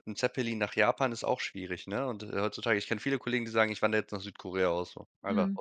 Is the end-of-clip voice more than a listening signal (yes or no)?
yes